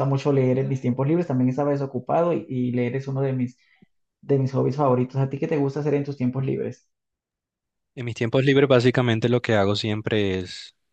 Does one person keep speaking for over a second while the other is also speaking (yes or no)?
no